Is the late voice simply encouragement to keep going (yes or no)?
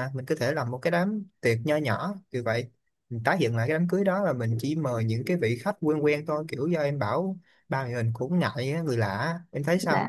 no